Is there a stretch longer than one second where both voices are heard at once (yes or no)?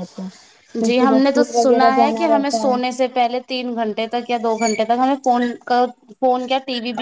yes